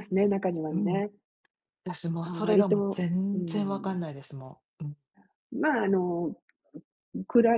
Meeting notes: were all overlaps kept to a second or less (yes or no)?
no